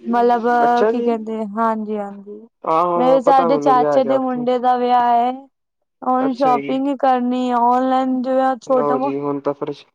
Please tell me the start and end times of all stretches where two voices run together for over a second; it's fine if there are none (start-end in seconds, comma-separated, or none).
3.0-4.5